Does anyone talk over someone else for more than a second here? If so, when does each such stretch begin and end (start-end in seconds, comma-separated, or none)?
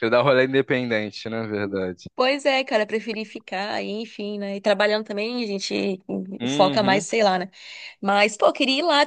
none